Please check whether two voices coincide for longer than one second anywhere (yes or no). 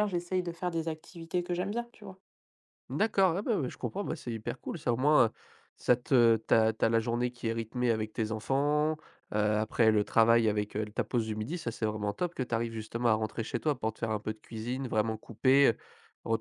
no